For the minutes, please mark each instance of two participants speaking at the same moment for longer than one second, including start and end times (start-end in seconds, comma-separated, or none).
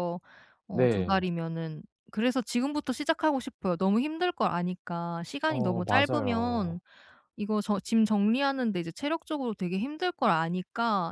5.5-6.8